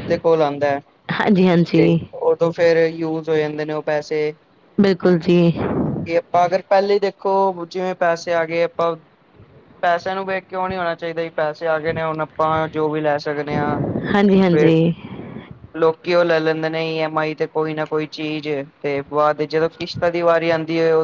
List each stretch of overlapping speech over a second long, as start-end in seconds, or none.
none